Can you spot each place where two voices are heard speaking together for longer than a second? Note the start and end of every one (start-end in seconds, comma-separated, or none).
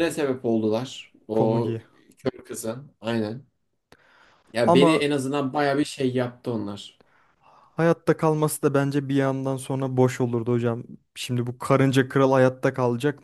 none